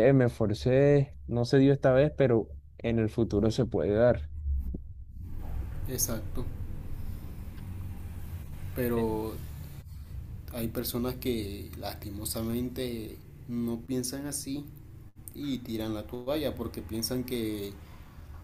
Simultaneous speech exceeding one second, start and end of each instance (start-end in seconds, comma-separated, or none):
none